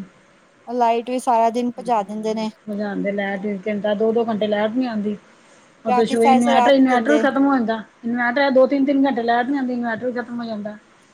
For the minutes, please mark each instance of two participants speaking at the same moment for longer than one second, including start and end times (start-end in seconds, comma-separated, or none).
5.9-7.2